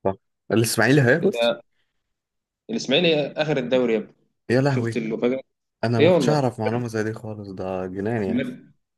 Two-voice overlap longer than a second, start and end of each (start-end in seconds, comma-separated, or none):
none